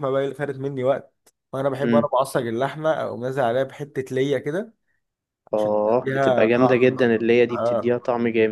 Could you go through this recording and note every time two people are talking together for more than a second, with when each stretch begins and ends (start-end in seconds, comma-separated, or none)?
5.5-7.0